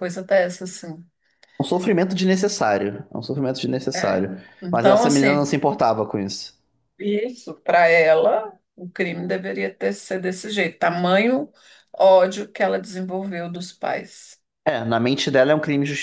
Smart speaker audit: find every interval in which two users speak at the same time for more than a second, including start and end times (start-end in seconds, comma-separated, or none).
3.9-5.5